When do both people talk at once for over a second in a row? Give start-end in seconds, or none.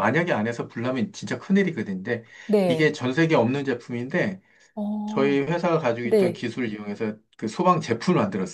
none